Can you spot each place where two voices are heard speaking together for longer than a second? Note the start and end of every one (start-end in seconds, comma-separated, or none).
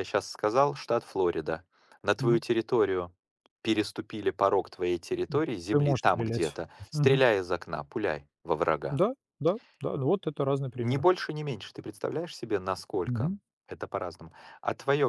5.7-7.2